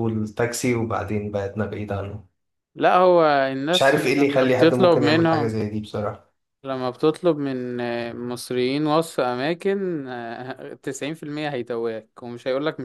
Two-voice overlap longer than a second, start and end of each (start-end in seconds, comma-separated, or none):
3.7-5.6